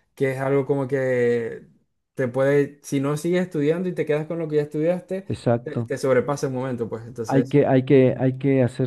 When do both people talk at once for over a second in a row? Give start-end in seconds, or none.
none